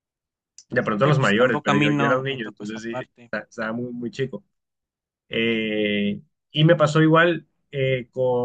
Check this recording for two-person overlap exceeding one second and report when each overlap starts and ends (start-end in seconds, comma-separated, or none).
1.0-3.3